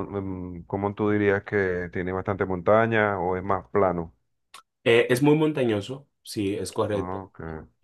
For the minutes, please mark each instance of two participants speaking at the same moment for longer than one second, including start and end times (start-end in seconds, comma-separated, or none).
none